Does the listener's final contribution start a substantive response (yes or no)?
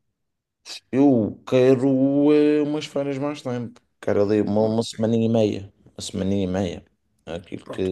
yes